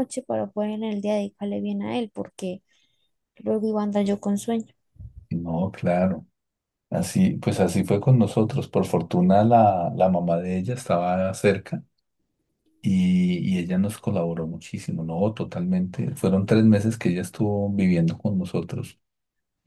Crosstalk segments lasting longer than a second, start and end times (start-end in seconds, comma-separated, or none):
none